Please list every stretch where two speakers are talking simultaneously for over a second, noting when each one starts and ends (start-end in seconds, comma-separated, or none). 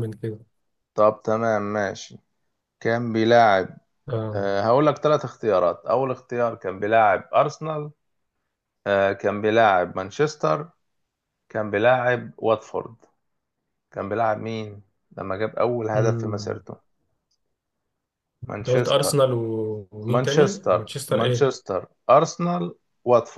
20.1-21.6